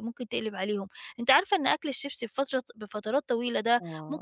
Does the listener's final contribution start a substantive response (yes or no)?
no